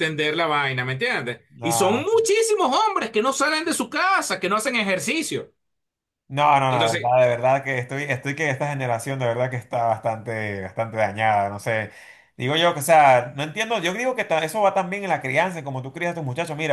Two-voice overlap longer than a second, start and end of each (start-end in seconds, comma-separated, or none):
none